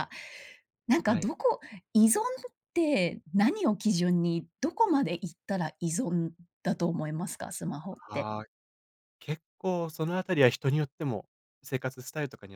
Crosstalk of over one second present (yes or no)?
no